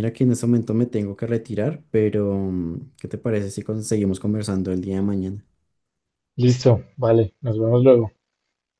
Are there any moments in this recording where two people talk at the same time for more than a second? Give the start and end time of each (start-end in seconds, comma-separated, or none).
none